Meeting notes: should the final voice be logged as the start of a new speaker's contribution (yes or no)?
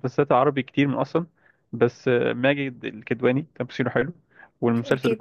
no